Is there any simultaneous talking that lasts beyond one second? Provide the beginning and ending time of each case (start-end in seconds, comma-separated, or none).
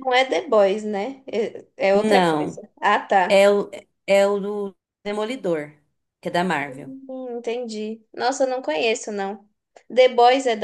none